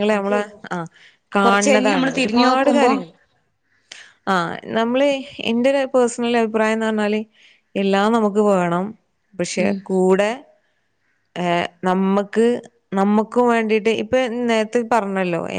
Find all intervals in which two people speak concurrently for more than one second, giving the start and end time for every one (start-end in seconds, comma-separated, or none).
1.4-2.9